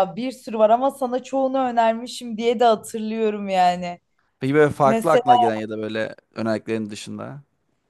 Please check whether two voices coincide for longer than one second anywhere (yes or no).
no